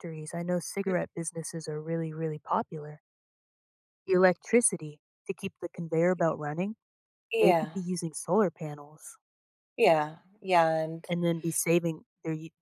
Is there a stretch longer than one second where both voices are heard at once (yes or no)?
no